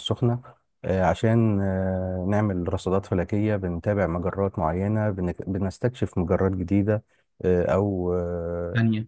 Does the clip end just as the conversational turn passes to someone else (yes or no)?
yes